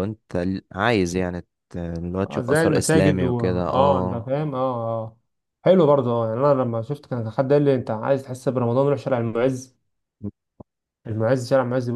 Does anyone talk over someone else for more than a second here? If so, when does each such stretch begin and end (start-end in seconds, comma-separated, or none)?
2.2-4.3